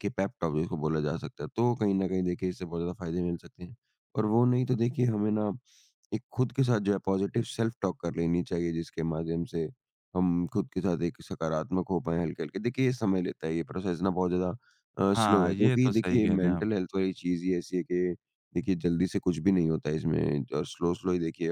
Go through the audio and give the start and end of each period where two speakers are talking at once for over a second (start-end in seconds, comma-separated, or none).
15.1-16.7